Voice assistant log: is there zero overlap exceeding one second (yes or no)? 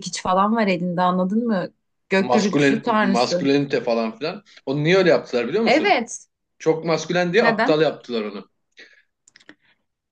no